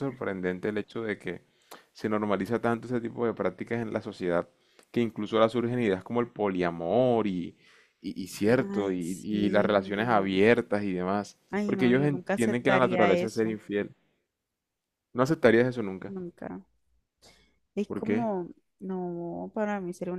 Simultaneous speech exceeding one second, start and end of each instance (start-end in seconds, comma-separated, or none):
8.5-10.4, 11.5-13.6